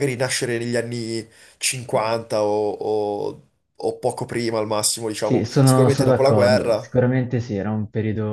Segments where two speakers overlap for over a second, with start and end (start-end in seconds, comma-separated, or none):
5.2-6.9